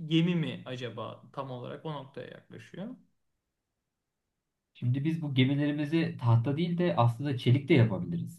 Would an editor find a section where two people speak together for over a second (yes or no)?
no